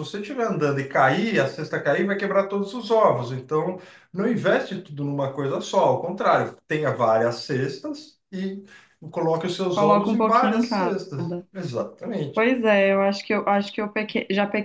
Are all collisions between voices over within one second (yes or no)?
no